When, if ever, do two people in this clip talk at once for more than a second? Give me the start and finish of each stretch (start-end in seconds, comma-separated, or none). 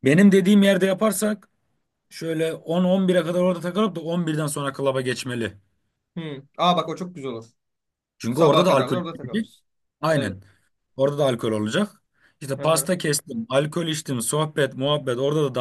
8.3-9.5